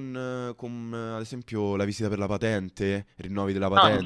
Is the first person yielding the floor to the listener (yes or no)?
no